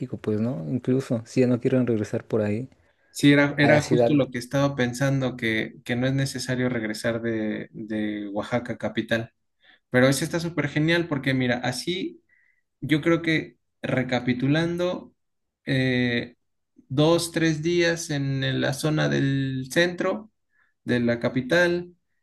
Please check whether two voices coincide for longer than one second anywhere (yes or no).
no